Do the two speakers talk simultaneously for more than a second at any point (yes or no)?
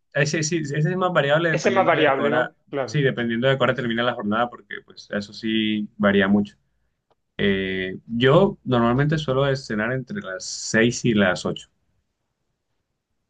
yes